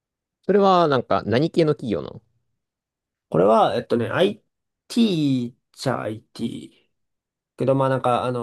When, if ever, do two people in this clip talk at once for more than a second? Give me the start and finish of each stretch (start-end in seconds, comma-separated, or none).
none